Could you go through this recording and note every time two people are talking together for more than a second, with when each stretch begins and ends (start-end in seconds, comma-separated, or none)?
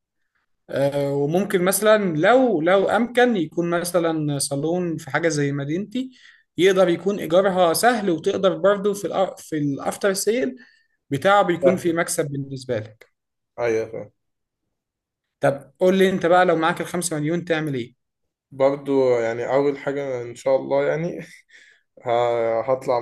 none